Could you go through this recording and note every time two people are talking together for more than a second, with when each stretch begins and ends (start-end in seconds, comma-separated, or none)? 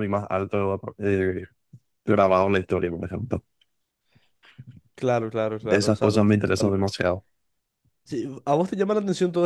5.6-7.0